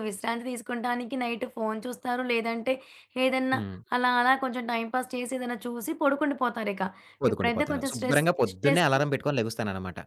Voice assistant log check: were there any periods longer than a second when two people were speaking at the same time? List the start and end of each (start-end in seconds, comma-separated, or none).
7.3-8.9